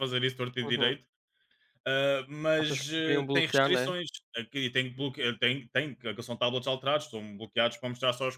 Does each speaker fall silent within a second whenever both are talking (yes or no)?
no